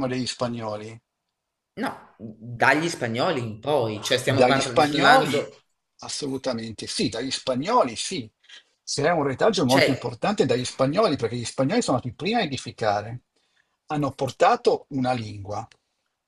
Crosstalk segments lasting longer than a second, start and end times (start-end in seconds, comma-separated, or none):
4.2-5.5